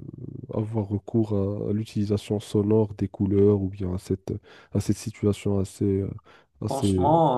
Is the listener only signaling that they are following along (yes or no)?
no